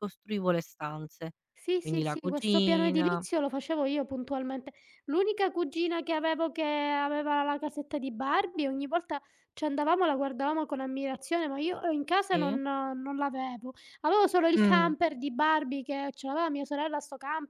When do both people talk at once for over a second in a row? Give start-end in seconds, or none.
1.8-3.2